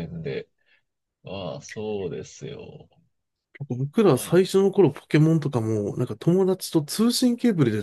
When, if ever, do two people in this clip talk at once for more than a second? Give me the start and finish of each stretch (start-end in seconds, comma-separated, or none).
none